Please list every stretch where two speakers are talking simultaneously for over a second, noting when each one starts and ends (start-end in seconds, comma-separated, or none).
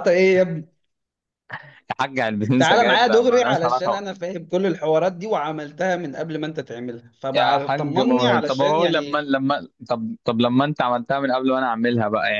2.6-4.0, 7.3-9.2